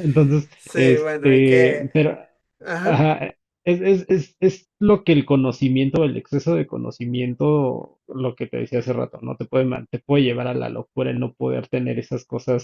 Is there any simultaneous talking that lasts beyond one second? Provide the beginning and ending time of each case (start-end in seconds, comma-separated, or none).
0.6-1.9